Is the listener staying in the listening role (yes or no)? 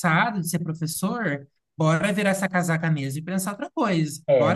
no